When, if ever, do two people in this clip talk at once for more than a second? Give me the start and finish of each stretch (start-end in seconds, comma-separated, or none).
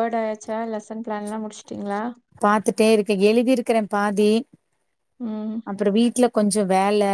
none